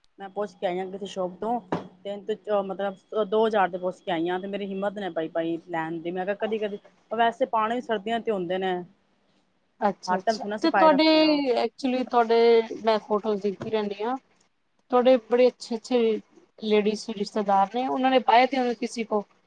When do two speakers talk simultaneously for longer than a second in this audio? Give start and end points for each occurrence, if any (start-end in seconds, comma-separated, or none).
10.1-11.4